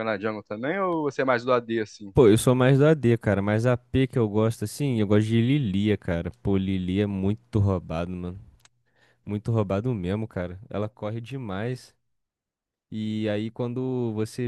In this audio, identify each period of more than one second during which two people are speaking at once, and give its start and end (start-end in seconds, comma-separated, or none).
none